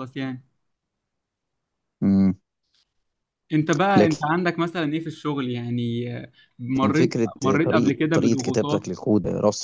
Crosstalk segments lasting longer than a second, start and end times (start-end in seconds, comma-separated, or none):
6.9-8.9